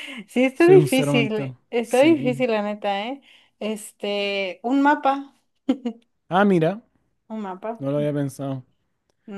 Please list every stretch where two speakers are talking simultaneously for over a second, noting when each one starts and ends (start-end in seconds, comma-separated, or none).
0.5-2.5